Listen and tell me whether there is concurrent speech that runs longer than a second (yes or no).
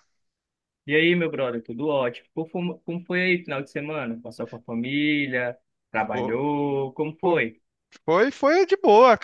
no